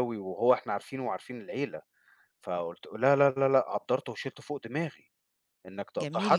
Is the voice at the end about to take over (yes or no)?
no